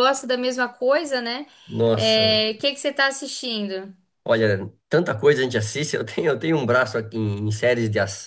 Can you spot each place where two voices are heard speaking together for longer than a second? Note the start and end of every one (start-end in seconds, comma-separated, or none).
none